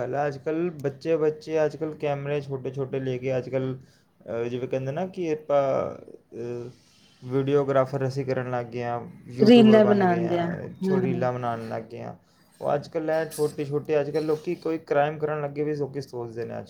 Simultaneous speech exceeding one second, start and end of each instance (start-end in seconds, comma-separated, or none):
9.5-11.3